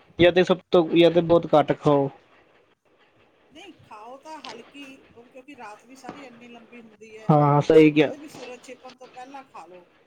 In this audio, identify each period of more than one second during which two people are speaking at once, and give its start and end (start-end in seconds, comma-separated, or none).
none